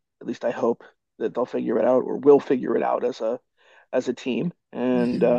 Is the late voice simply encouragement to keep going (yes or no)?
yes